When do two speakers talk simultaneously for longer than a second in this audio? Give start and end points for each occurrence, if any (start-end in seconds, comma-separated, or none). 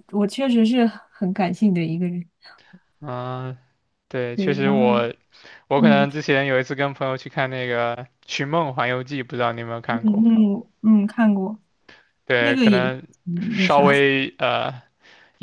none